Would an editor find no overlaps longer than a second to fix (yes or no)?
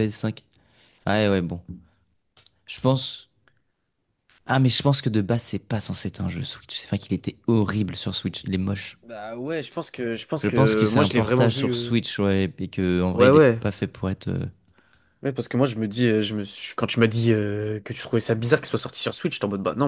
no